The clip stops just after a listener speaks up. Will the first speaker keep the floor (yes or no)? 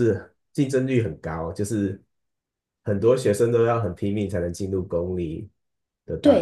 no